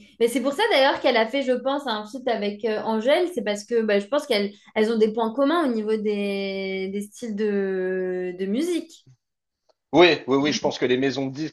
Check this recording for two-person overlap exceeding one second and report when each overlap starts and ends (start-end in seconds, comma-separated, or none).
none